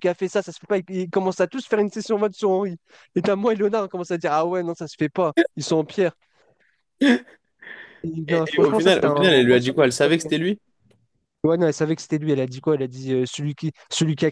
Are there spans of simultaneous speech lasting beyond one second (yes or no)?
yes